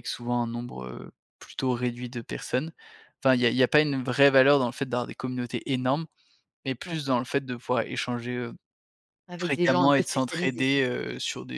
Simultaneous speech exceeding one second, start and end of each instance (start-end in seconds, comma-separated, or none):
9.4-10.8